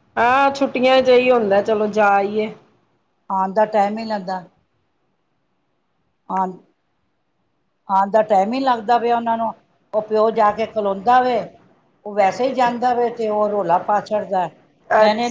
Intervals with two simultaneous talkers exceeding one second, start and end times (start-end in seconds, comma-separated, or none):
8.0-9.2